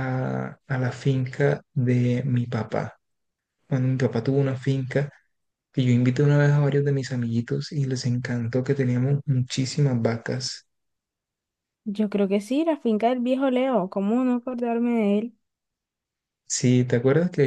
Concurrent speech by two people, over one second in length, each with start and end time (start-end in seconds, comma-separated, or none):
none